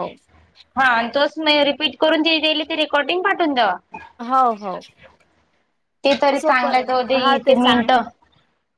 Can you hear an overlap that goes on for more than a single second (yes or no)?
yes